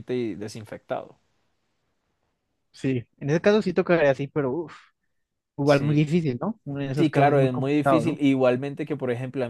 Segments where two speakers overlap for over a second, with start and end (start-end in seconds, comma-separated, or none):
7.0-8.2